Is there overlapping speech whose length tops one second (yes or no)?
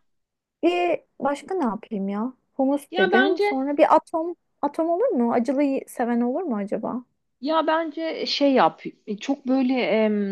no